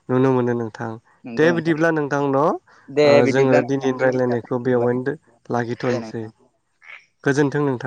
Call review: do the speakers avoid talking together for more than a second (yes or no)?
no